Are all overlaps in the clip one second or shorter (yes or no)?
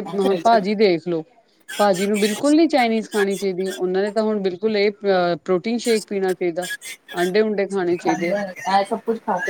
yes